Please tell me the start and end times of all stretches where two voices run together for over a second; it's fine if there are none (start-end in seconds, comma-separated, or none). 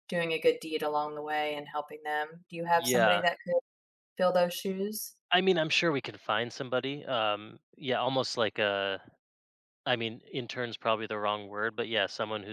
none